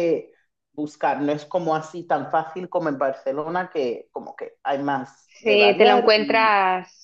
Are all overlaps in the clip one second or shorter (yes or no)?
no